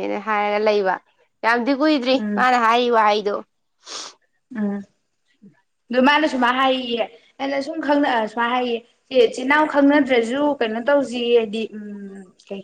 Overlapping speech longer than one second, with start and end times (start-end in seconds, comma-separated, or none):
none